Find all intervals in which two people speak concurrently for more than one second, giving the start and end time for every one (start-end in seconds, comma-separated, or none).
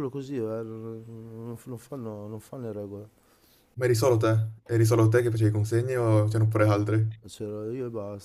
none